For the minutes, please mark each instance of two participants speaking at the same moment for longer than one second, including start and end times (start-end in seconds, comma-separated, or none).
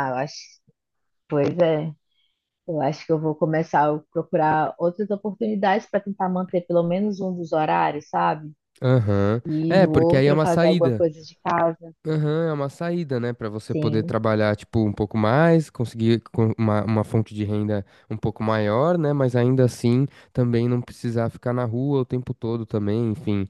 9.5-11.0